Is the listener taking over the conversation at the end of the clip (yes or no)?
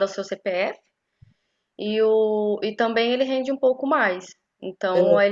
no